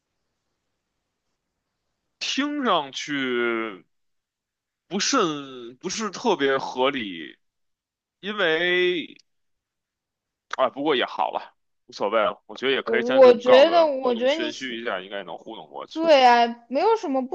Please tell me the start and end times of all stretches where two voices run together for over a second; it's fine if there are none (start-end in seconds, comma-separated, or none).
12.8-14.5